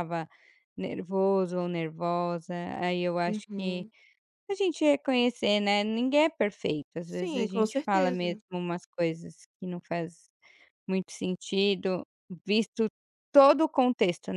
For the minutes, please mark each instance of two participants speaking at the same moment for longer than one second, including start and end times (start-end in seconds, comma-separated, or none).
7.0-8.4